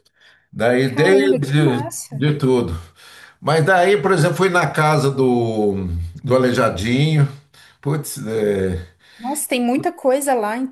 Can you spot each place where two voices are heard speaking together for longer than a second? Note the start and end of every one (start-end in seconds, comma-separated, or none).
0.8-2.3